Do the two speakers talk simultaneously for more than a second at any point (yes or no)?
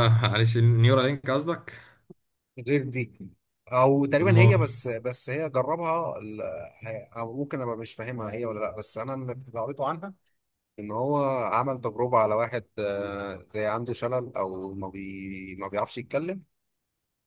no